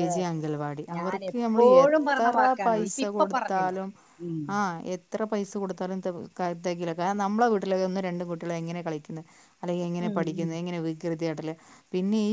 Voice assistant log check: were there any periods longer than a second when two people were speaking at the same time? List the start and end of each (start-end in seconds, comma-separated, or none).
0.9-3.8